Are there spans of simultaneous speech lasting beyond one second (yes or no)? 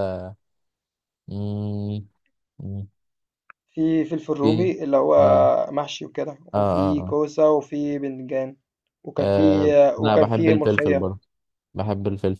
yes